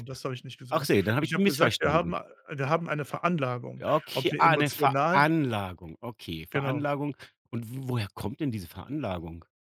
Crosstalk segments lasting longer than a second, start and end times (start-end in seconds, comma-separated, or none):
0.7-2.1, 3.8-5.3